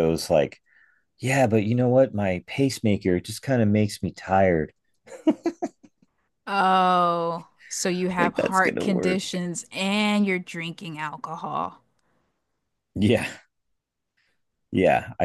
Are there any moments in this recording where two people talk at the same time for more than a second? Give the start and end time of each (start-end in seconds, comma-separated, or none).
8.2-9.4